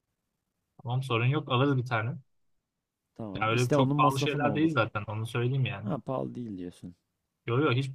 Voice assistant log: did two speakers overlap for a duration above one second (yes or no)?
yes